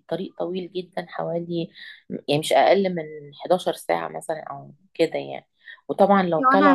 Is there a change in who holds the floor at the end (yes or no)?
yes